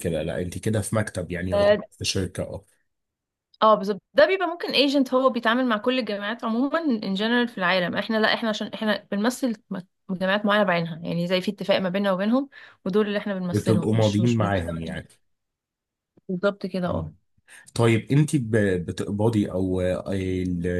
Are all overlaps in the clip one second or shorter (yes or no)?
no